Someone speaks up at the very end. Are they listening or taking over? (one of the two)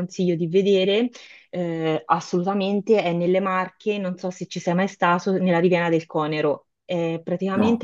listening